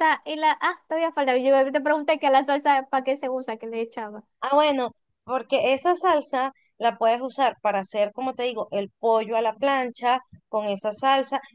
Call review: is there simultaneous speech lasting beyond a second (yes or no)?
no